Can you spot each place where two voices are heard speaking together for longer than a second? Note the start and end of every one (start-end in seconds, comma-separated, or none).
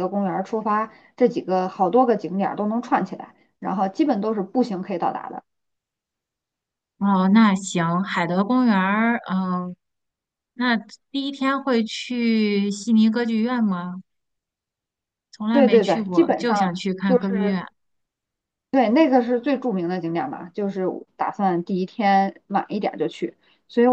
15.5-17.6